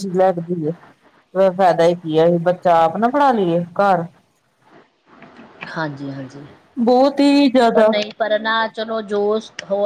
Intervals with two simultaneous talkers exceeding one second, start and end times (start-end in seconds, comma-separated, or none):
none